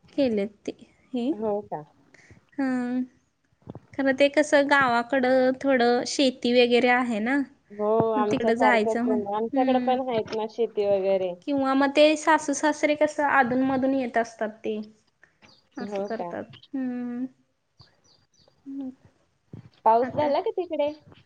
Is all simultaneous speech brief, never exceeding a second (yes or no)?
no